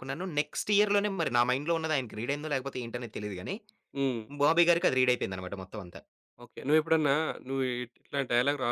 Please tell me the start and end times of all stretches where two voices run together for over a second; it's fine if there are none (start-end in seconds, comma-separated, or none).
none